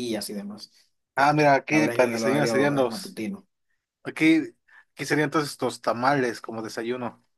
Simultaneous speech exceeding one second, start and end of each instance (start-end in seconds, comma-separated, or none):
1.7-3.2